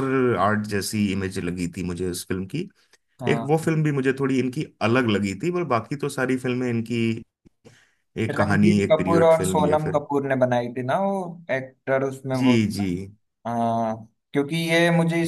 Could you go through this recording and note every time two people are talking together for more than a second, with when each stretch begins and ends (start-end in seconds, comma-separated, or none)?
8.3-10.0